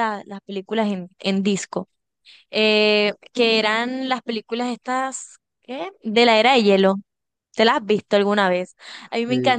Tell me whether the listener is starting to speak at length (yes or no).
no